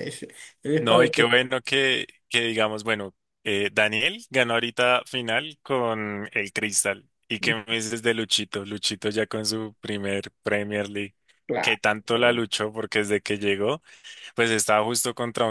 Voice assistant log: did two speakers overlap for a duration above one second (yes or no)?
no